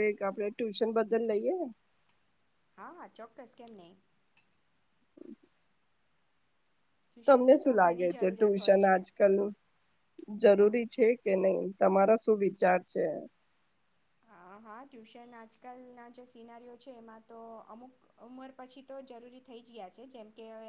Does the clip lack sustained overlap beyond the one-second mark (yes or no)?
no